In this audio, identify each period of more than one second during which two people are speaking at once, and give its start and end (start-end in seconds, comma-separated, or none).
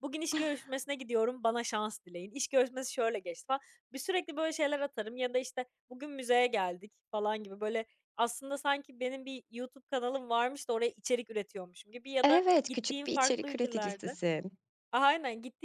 12.2-14.2